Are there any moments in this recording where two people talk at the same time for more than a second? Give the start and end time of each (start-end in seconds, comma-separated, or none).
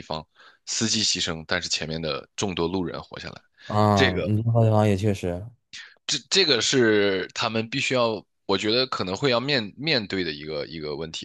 none